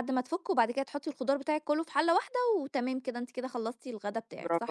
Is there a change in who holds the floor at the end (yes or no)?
yes